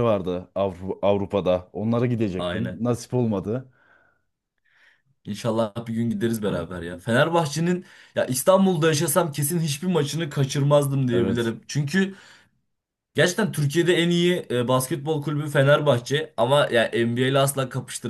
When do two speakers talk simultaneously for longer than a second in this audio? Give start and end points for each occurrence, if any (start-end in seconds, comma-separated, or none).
none